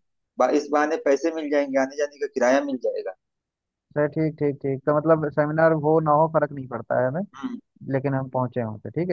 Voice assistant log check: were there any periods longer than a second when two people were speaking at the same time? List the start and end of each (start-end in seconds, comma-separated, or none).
none